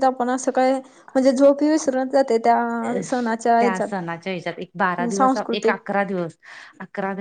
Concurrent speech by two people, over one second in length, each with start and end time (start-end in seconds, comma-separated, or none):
none